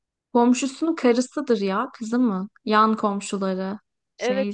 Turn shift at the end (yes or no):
yes